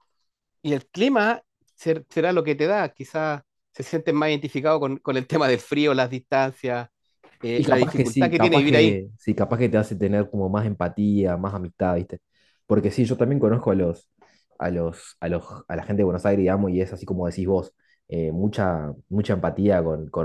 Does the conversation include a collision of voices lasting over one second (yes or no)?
yes